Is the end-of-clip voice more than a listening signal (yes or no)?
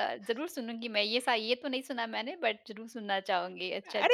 yes